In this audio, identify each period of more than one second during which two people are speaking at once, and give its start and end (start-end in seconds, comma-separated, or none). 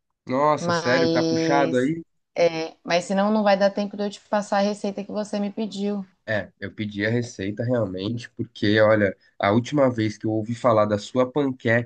0.6-1.9